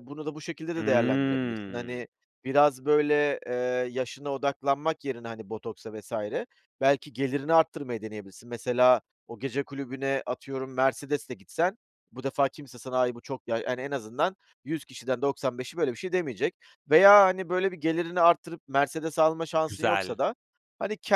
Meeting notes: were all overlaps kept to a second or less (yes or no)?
no